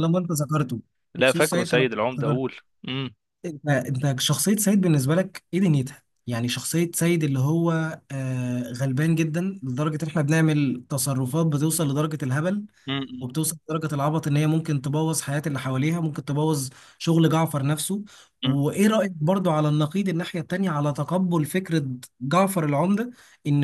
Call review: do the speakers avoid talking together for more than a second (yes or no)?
no